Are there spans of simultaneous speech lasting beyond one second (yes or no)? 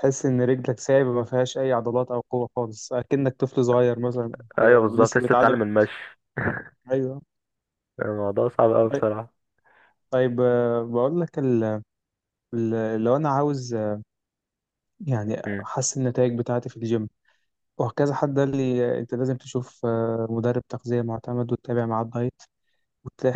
yes